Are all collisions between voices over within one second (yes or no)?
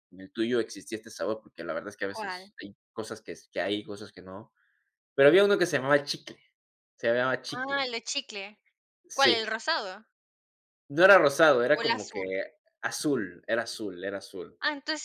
yes